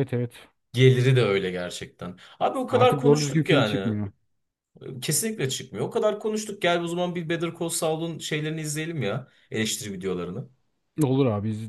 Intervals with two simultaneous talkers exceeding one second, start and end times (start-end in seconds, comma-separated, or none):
2.7-4.0